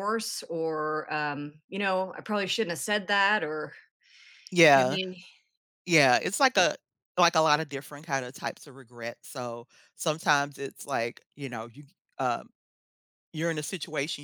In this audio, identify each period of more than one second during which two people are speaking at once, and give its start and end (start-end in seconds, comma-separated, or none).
none